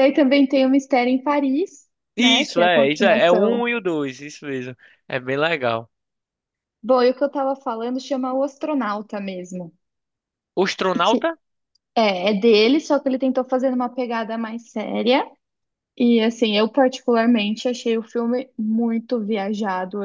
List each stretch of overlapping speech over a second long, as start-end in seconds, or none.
2.1-3.7